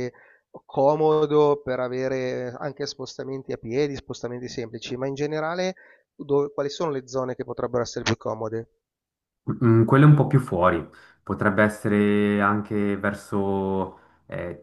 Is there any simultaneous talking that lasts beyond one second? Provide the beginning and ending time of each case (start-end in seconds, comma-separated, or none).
none